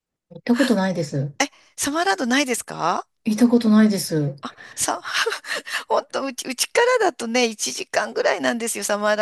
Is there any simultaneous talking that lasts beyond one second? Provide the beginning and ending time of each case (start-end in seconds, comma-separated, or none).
none